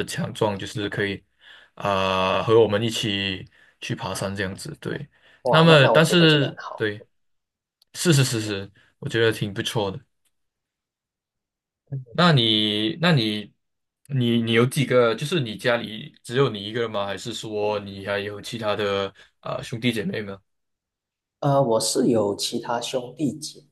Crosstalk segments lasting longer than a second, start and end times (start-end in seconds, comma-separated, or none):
5.5-6.9